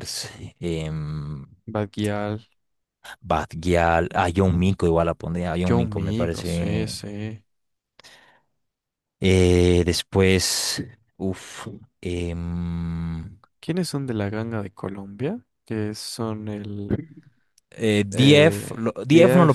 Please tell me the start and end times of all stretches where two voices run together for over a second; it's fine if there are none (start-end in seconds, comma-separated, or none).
5.6-7.0